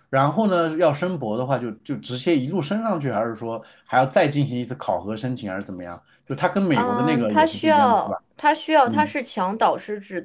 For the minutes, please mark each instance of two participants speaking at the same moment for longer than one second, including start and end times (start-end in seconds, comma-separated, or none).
6.7-8.2